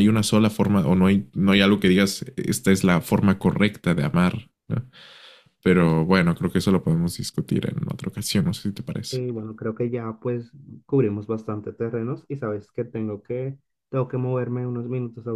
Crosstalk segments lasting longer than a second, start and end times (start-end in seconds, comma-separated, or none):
none